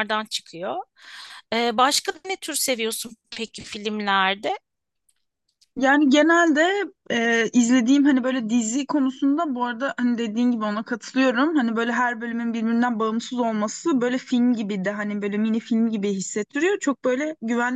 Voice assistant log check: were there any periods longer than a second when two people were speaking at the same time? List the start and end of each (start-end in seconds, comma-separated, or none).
none